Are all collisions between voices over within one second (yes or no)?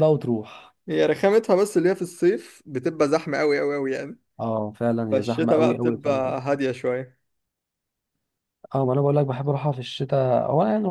no